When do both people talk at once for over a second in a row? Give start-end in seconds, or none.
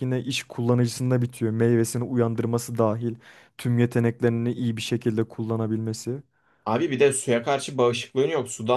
none